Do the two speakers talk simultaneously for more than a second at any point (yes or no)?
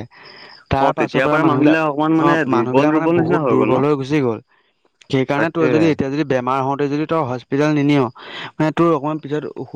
yes